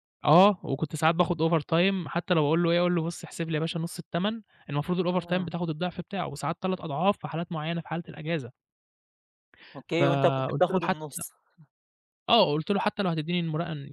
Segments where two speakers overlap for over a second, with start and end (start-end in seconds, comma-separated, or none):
9.9-11.2